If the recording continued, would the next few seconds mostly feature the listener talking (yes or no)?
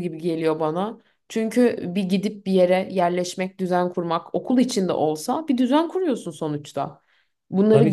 no